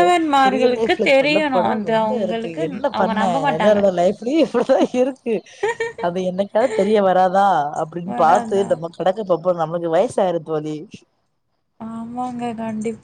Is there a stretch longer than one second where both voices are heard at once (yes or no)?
yes